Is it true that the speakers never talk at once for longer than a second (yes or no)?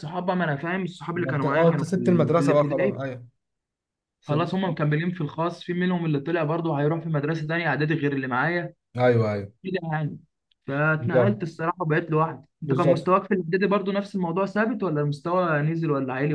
no